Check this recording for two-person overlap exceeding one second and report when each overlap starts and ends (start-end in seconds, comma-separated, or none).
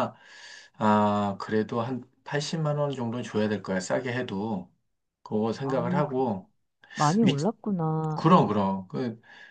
none